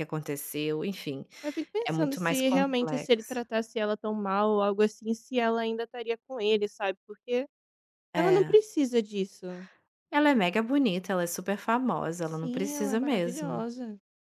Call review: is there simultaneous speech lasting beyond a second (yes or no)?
yes